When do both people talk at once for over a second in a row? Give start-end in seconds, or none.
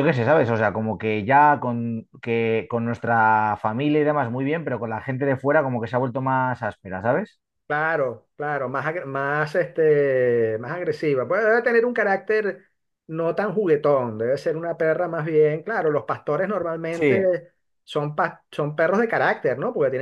none